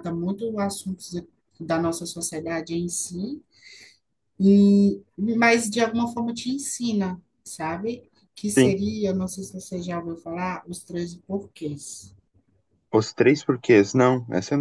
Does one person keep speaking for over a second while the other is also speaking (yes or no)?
no